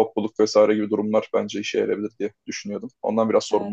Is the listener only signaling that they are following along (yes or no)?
no